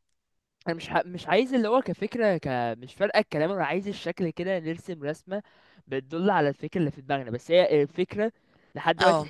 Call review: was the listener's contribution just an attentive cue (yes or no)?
yes